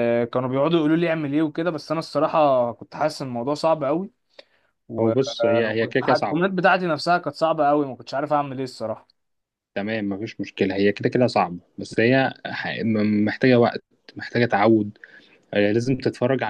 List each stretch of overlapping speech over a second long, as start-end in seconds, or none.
5.0-6.4